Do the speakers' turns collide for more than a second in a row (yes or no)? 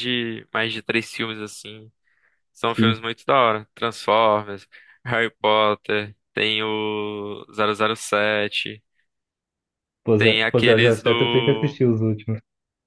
yes